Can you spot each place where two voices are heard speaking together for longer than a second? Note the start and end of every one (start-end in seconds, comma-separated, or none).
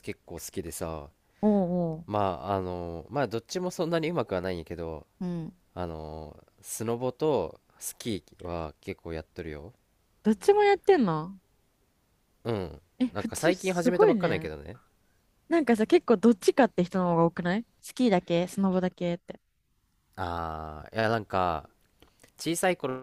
13.0-14.5